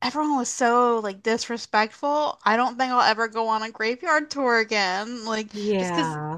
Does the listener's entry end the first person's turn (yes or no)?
no